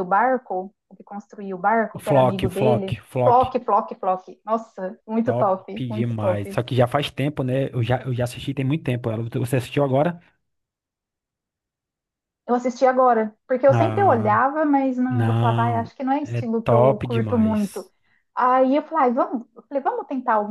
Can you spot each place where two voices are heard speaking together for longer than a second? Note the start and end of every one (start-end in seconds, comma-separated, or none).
1.9-3.4, 5.2-6.6, 15.1-17.9